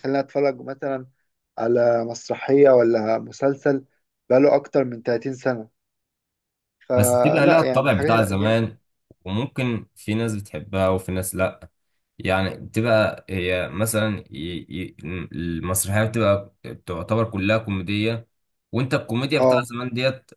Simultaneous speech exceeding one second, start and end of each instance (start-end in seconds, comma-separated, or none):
6.9-8.5